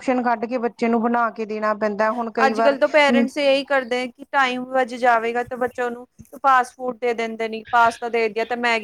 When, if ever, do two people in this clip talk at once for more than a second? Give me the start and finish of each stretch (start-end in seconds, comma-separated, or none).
none